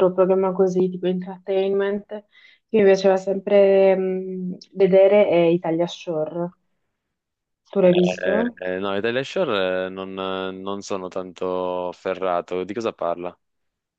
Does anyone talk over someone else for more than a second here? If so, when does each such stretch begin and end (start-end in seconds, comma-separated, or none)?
none